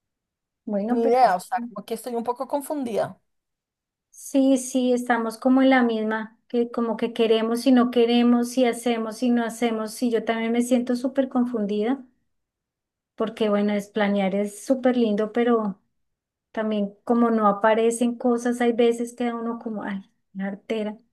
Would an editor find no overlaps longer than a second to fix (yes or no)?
yes